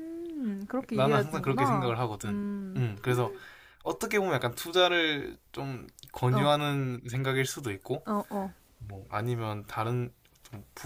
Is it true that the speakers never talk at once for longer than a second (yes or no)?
no